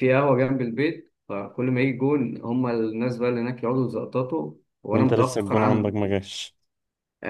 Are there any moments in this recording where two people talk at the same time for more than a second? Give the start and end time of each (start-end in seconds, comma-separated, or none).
4.9-6.2